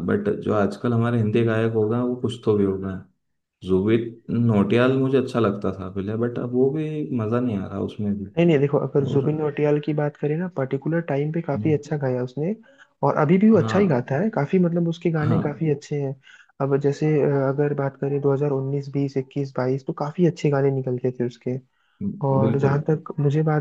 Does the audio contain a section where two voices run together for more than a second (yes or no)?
no